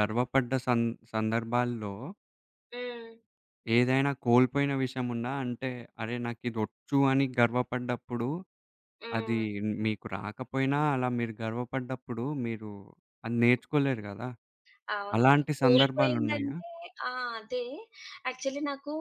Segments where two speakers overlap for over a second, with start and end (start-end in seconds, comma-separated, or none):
15.2-16.5